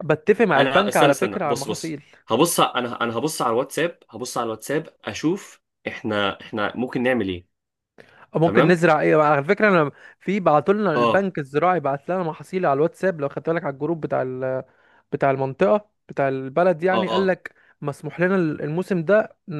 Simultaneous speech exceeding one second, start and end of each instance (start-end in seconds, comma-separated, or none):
0.6-2.0